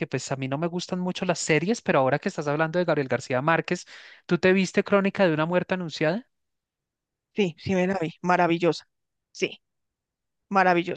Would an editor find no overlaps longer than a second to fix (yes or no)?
yes